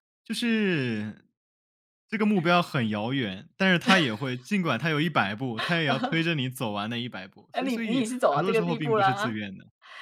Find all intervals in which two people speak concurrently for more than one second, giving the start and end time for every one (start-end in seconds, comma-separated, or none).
7.5-9.4